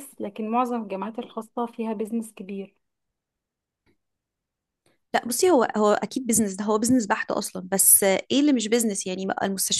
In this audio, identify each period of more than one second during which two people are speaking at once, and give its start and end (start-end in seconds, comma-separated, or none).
none